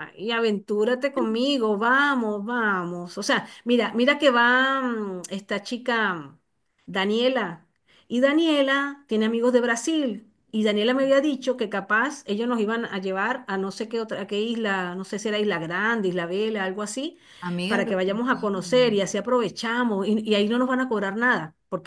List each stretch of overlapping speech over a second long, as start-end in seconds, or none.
17.7-19.0